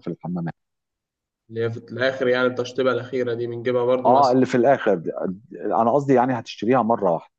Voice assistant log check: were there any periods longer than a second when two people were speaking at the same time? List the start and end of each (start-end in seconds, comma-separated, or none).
none